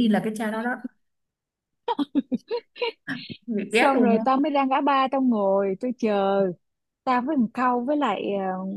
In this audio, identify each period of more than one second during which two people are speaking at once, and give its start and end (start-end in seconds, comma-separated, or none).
none